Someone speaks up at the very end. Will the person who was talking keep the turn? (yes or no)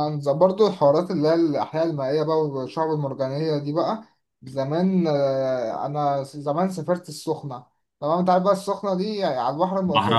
yes